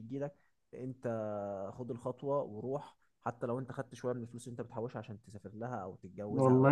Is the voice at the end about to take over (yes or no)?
yes